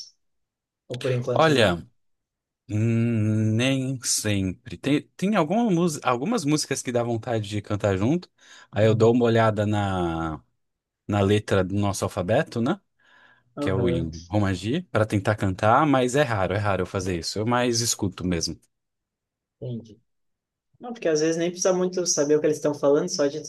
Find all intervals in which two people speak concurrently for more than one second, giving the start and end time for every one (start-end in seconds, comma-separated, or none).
none